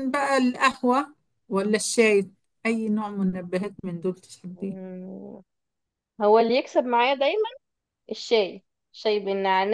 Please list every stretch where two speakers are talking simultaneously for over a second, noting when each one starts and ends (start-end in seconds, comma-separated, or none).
none